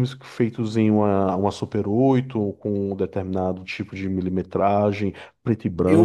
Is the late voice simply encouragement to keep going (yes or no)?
no